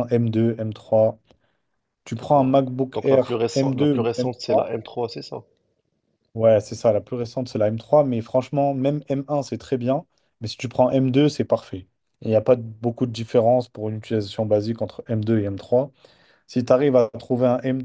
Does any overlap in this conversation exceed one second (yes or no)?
yes